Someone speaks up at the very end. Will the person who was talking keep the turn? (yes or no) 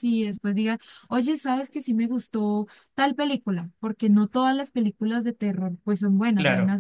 no